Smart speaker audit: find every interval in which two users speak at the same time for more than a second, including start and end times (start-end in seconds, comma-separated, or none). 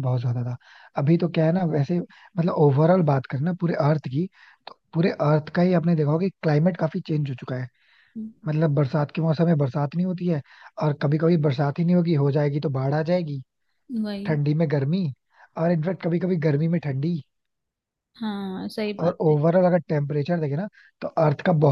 none